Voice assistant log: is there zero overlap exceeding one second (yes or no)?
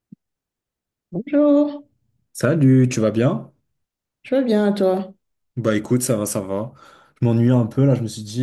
yes